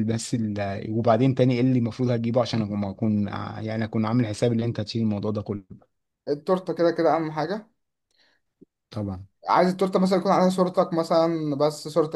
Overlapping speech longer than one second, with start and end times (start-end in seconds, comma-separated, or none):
none